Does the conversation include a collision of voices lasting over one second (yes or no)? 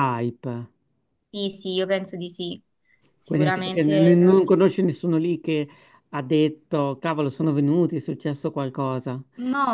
yes